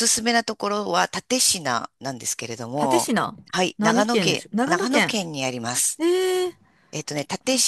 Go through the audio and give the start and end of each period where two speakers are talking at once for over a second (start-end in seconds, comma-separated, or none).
3.8-5.2